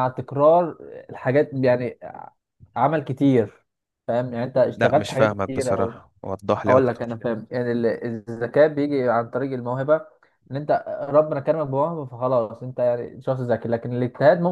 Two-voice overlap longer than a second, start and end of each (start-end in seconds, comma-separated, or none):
4.8-6.0